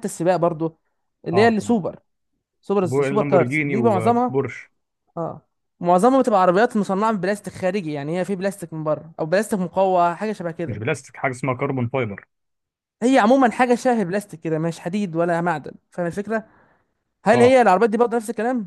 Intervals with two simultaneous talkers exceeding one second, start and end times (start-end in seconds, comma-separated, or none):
2.8-4.4